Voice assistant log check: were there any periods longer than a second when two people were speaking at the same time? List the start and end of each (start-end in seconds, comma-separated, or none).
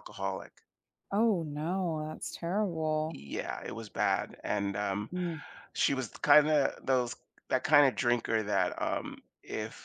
none